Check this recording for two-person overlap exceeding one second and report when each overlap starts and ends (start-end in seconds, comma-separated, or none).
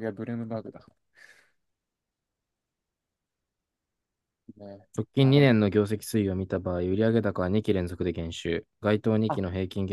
none